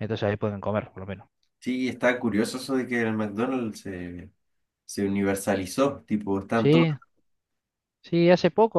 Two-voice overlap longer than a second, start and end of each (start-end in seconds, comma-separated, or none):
none